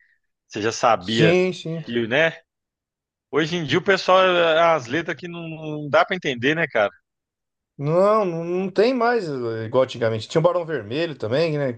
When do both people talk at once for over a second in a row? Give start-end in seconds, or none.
none